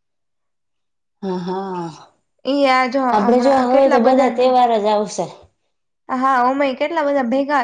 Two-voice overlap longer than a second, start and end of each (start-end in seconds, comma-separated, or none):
3.1-4.6